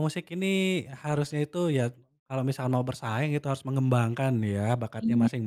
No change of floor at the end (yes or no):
yes